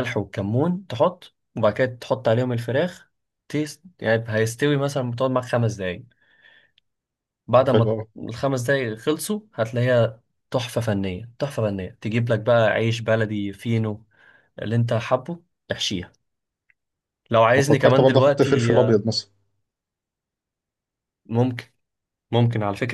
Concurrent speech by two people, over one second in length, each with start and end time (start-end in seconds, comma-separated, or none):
17.6-19.1